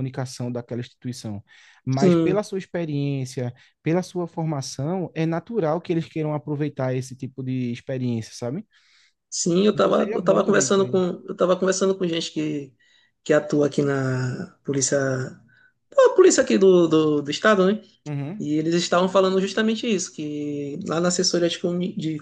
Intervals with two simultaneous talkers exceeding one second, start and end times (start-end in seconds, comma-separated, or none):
9.7-11.0